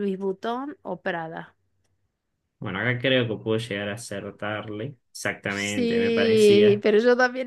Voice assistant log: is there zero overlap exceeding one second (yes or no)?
no